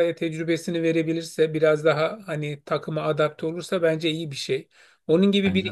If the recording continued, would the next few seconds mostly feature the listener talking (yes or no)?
no